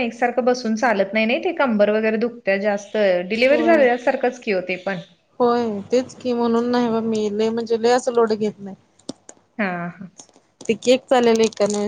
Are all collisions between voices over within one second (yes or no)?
yes